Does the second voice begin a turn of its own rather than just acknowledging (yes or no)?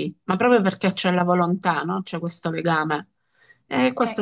yes